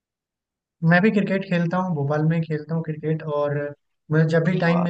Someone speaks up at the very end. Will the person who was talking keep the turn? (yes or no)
yes